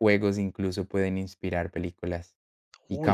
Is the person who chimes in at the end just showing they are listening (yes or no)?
no